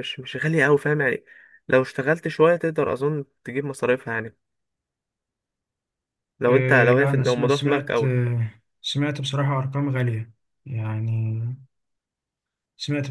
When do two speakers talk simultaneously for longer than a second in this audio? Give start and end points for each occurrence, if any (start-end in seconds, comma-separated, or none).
6.5-8.1